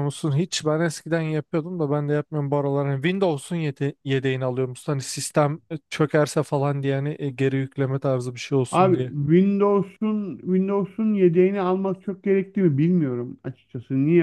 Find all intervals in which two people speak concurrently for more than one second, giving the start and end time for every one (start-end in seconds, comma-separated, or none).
none